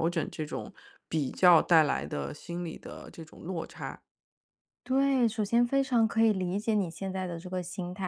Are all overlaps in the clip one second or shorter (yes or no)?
yes